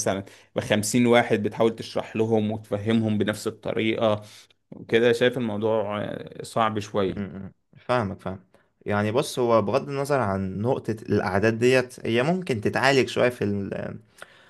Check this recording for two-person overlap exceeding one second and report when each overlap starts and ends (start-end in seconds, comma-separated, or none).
none